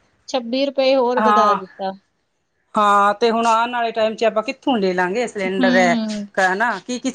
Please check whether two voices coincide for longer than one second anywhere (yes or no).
no